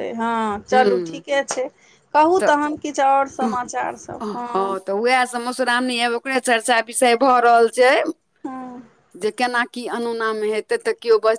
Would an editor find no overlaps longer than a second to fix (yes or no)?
yes